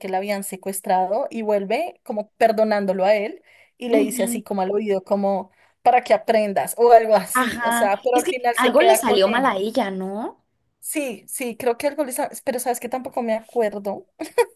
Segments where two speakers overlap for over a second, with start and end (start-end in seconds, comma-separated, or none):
7.3-9.6